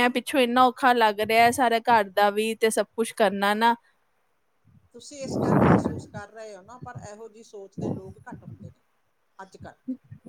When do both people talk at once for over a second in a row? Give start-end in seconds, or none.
none